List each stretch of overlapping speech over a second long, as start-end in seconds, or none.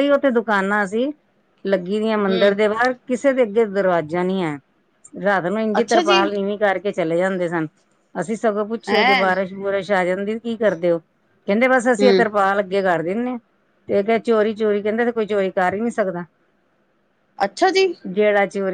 none